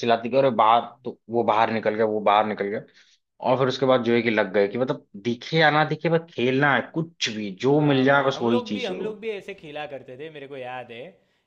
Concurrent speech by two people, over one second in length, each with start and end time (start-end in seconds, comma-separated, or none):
7.7-9.1